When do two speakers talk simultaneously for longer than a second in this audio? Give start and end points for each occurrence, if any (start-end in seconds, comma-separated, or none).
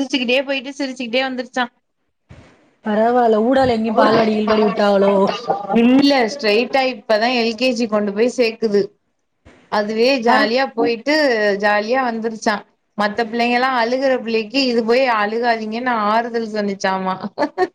none